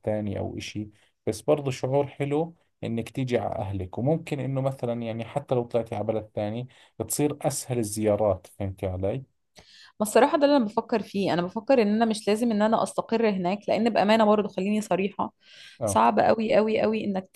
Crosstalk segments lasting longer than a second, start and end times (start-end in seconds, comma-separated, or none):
none